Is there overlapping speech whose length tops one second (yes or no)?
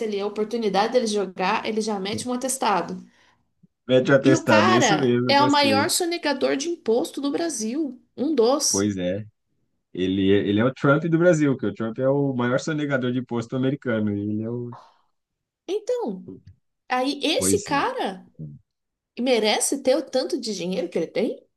yes